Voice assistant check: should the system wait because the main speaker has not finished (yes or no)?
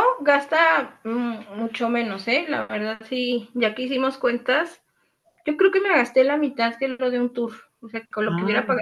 yes